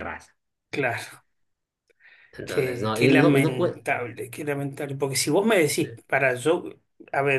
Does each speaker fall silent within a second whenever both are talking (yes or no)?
no